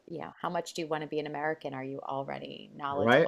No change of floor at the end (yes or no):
no